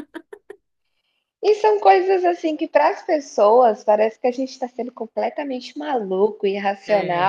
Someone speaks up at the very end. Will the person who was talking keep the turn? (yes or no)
yes